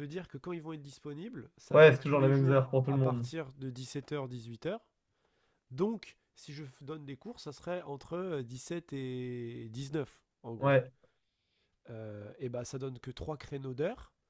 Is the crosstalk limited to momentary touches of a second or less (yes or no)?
no